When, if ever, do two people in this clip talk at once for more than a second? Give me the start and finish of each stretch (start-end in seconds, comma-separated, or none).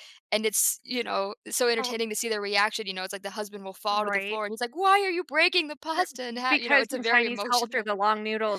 6.5-7.9